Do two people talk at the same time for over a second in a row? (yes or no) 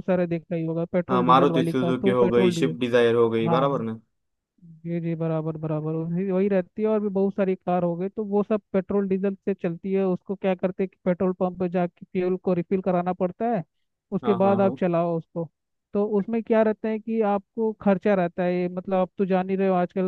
yes